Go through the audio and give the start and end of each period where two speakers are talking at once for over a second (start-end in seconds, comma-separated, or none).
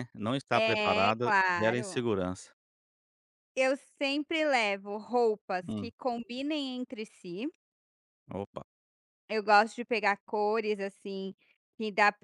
0.5-2.1